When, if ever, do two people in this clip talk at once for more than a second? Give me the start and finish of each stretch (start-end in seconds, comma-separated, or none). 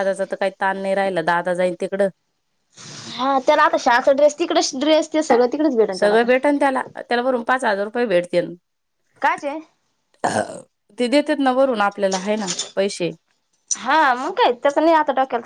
none